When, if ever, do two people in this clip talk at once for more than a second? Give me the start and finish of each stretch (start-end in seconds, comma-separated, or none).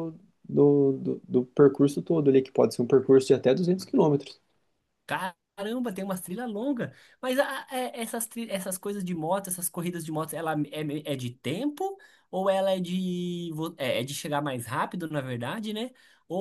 none